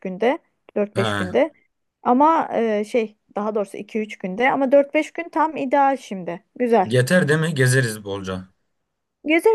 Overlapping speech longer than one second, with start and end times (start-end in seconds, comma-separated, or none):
none